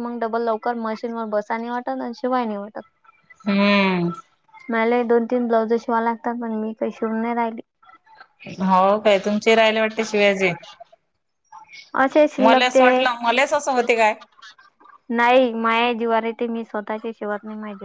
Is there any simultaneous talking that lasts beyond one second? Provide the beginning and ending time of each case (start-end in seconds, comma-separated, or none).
none